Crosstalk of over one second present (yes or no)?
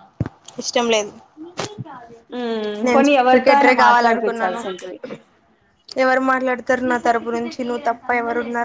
yes